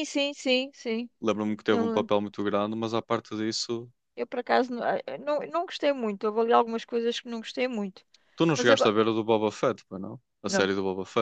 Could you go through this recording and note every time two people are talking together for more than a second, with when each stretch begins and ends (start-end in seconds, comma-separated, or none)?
none